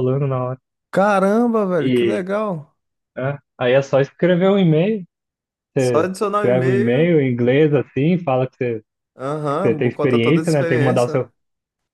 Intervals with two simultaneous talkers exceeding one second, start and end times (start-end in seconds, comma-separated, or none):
5.8-7.2, 9.7-11.3